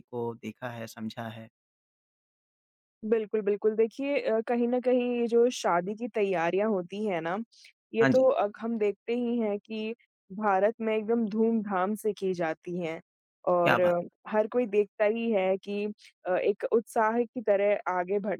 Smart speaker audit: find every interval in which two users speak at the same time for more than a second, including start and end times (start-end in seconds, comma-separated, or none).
none